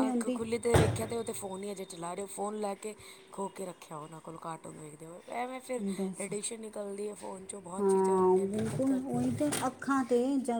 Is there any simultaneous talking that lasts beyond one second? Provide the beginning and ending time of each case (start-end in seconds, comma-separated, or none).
7.8-9.4